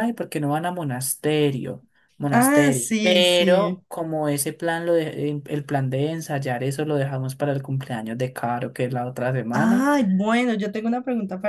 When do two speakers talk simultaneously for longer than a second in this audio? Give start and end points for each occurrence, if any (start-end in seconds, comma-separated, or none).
2.3-3.8